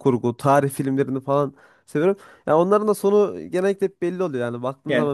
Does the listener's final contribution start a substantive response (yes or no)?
no